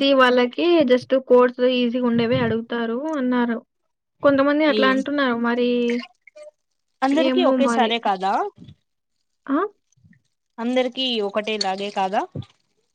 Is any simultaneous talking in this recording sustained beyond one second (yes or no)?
no